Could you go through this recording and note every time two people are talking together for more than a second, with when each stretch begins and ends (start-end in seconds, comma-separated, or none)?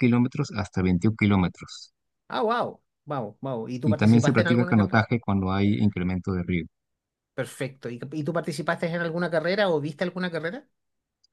3.8-5.0